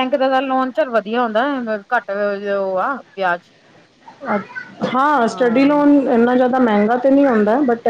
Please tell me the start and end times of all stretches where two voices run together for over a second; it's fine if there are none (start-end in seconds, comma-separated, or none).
none